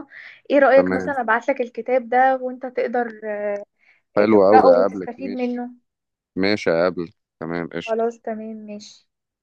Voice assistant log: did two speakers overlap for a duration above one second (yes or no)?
yes